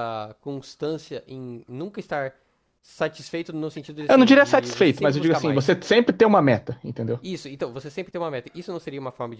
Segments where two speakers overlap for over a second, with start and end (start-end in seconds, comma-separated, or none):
4.1-5.7